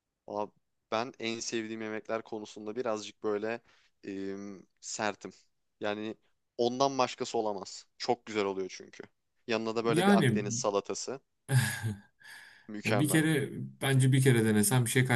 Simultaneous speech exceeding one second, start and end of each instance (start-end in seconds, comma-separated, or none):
none